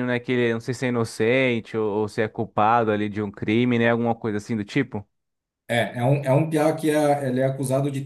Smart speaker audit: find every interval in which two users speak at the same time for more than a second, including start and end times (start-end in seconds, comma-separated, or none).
none